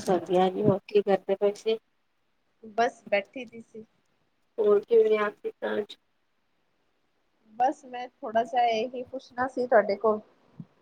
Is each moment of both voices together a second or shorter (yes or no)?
yes